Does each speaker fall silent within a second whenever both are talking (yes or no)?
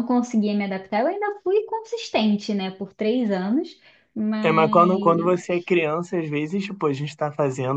yes